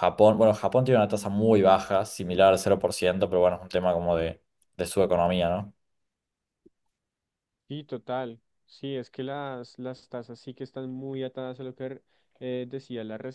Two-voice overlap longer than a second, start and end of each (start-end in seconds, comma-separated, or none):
none